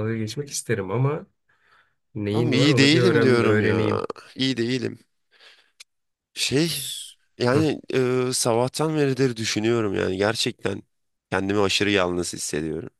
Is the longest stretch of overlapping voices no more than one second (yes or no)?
no